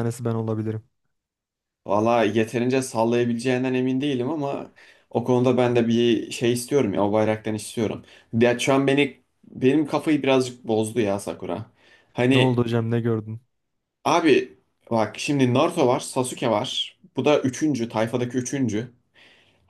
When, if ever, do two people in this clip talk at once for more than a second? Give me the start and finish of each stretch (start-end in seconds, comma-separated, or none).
none